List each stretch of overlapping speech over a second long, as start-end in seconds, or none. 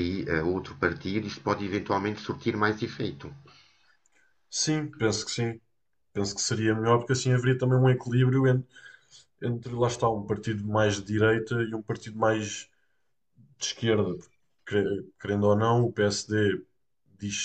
none